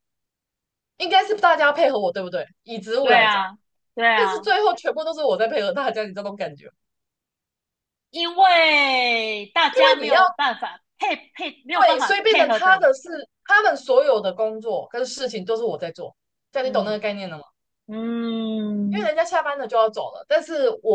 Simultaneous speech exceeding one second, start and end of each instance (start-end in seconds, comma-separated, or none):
11.7-12.9